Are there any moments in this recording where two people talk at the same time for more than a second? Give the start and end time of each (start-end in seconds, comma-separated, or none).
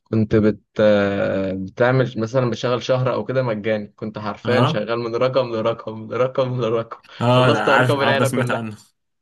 7.2-8.6